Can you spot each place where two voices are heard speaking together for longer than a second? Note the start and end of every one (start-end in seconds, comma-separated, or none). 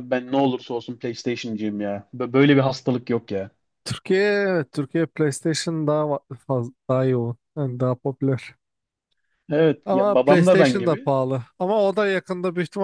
9.8-11.1